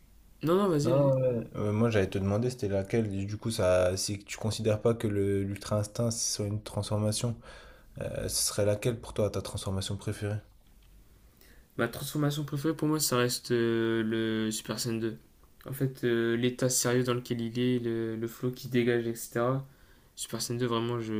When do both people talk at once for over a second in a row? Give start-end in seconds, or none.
none